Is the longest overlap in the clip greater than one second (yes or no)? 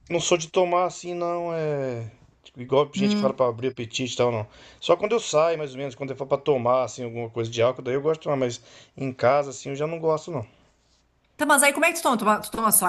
no